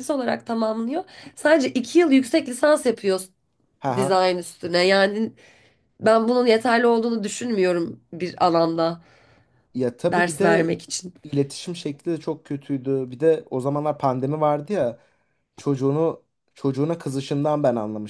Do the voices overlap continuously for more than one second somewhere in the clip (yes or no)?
no